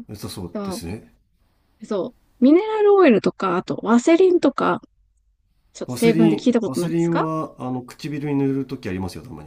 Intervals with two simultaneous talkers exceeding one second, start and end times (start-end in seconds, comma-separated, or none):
5.9-7.3